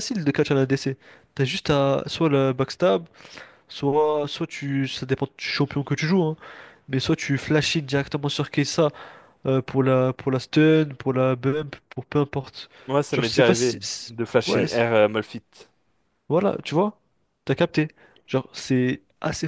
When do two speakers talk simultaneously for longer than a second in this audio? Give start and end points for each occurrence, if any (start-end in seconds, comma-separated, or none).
13.1-14.8